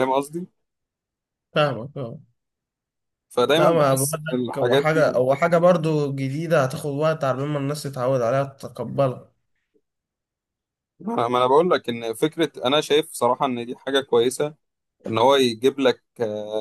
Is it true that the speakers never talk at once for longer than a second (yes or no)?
no